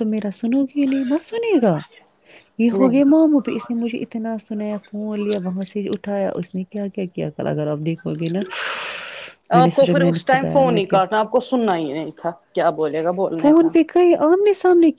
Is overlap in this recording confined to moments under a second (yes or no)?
yes